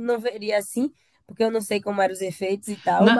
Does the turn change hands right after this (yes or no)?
yes